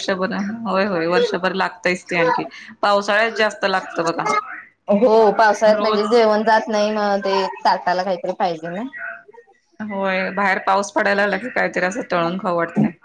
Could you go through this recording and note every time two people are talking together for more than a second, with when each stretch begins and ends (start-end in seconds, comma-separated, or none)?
none